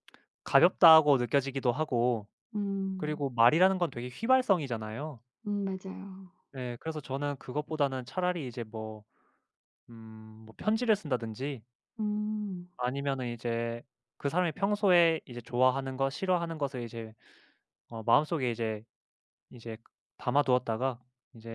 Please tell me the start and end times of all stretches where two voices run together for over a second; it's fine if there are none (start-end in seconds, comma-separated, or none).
none